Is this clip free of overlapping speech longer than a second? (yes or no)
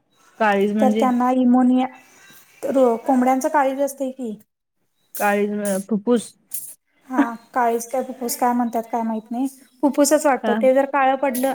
yes